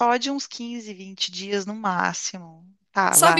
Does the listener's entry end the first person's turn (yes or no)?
yes